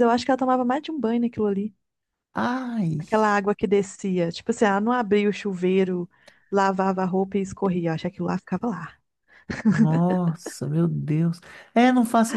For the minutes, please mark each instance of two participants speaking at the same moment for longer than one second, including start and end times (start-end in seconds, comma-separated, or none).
none